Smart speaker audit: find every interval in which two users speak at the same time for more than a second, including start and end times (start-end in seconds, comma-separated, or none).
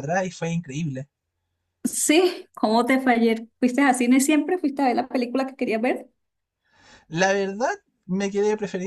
none